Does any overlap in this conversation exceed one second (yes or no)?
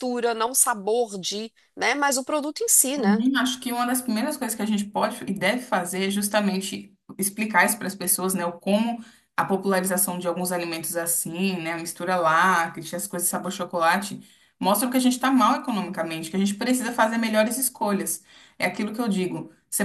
no